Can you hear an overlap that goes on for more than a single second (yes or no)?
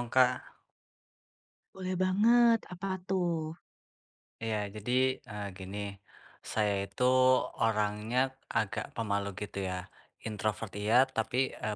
no